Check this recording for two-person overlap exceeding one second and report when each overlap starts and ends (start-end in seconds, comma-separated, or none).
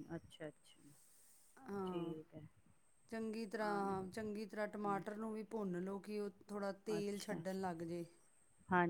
none